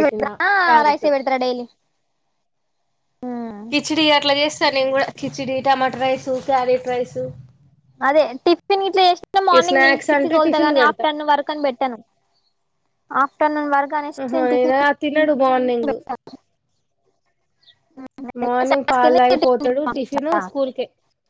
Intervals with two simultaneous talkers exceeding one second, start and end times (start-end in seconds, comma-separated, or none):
9.7-11.0